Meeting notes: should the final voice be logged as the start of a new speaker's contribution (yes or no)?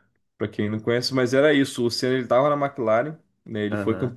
no